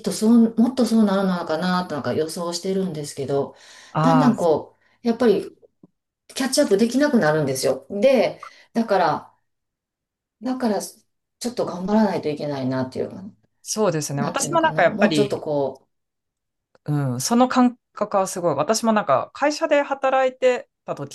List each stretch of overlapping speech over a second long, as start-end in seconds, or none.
14.1-15.4